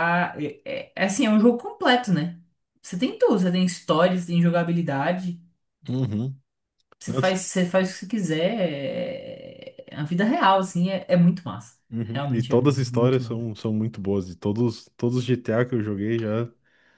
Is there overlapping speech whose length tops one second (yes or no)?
yes